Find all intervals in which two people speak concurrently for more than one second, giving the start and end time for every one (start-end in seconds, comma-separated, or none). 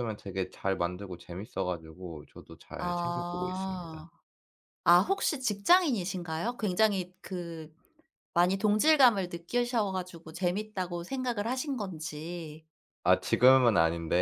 2.8-4.1